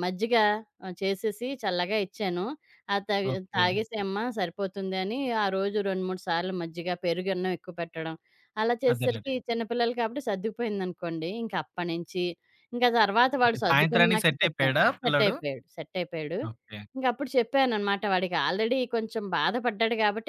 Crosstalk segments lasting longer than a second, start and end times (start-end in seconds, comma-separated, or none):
13.5-15.3